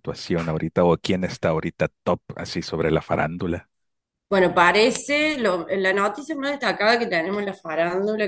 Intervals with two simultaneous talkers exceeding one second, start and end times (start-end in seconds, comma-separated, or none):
none